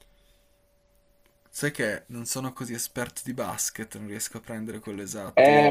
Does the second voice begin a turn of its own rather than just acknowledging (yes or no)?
yes